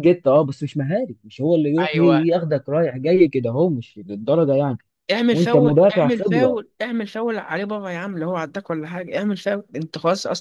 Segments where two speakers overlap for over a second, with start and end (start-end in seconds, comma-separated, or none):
5.3-6.6